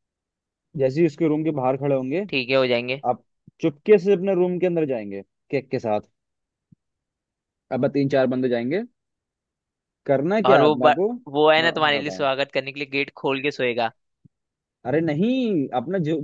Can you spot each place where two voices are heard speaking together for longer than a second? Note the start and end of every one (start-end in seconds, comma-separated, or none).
10.5-12.3